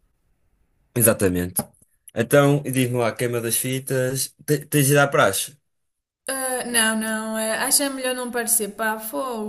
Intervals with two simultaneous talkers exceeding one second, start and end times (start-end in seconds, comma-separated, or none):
none